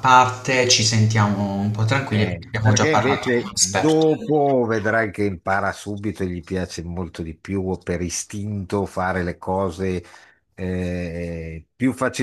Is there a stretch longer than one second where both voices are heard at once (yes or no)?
yes